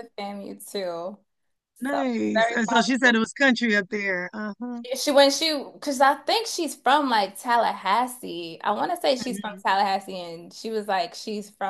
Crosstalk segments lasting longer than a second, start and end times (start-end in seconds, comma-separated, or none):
1.9-3.2